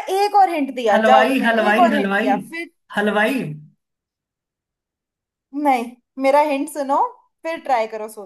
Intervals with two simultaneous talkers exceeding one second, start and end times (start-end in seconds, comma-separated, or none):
0.9-2.3